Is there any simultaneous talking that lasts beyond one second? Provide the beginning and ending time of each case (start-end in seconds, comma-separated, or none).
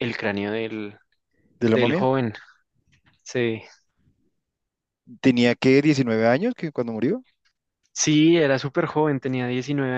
none